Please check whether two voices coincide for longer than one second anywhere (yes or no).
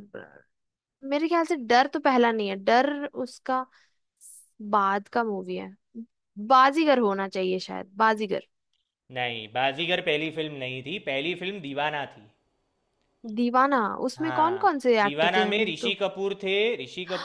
yes